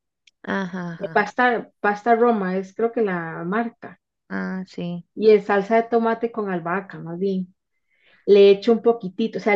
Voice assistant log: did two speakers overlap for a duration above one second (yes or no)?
no